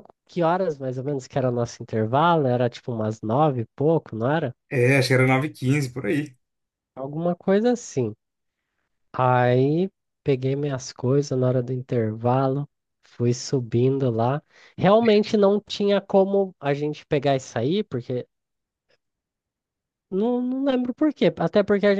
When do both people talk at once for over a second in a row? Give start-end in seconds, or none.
none